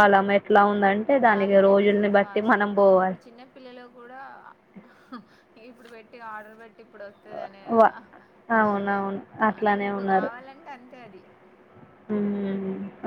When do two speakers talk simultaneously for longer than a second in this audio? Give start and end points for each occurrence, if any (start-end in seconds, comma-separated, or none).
1.3-3.2